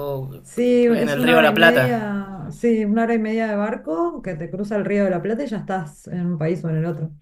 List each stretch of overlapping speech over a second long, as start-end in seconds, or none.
0.9-2.3